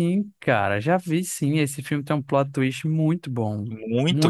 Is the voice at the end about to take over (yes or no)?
yes